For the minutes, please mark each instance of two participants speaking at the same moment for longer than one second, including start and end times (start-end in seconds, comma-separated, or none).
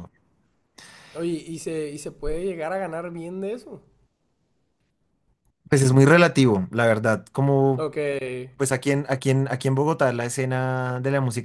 none